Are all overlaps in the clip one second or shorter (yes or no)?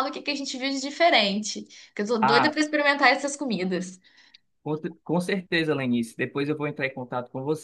yes